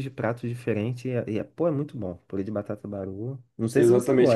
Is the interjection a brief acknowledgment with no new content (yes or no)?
no